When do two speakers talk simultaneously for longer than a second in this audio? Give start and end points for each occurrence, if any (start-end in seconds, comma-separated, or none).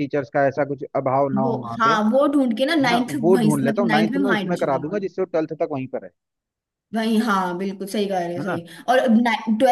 2.8-5.1